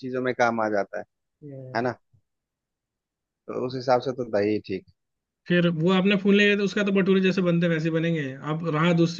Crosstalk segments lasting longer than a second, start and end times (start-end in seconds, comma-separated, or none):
none